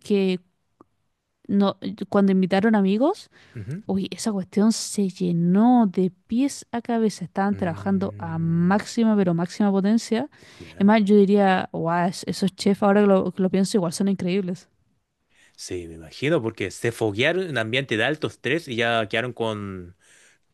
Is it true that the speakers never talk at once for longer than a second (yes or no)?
no